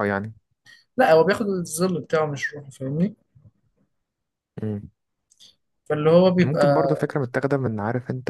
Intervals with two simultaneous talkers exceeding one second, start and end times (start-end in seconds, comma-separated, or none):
none